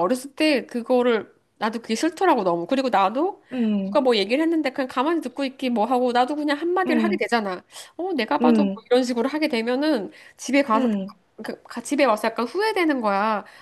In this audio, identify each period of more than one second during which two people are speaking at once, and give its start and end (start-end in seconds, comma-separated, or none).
none